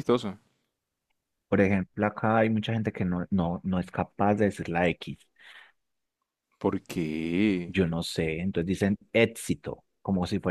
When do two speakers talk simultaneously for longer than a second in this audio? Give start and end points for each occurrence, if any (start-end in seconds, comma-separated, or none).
none